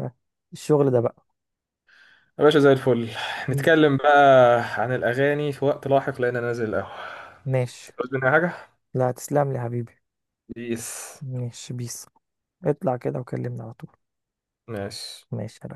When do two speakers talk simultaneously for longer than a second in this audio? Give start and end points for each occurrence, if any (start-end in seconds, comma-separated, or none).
none